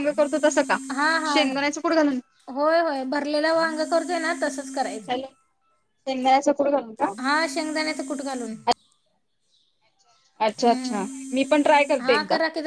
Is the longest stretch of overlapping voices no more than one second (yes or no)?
yes